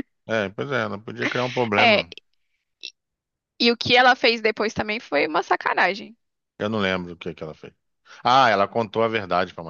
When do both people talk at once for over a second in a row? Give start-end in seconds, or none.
none